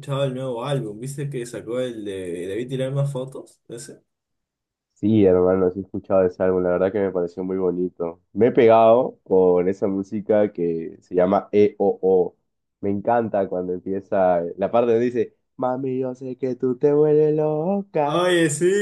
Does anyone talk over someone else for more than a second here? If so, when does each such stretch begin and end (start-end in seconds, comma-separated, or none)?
none